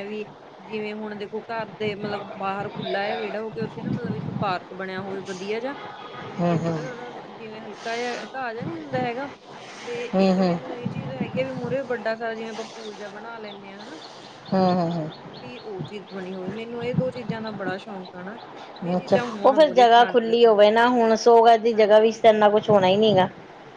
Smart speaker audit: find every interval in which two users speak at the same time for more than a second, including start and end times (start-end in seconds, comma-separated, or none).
18.9-20.5